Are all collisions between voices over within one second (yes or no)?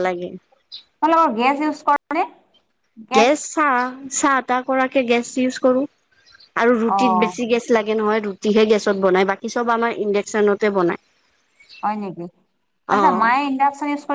yes